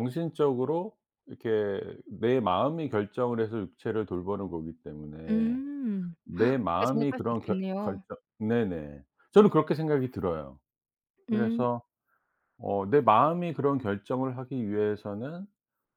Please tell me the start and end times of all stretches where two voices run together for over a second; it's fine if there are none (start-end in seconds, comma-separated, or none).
6.2-8.0